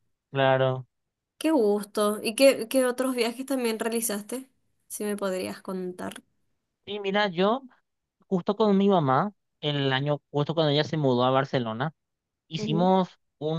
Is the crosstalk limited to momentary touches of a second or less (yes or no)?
yes